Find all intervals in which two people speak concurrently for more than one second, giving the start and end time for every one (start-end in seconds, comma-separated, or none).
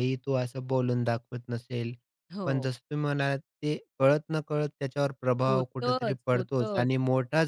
5.5-6.8